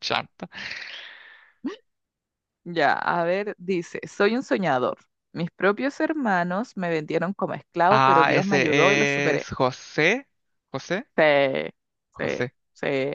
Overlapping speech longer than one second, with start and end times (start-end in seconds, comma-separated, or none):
7.9-9.5